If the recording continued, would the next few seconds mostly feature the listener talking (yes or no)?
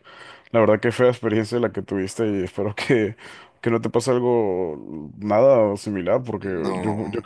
no